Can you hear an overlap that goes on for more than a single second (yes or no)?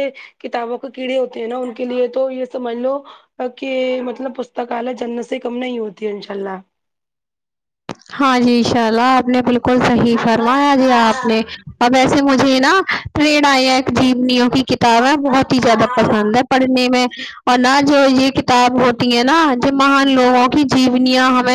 yes